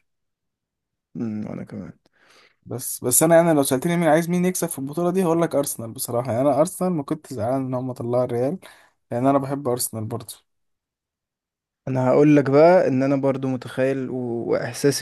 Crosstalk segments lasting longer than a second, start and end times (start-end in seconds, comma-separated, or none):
none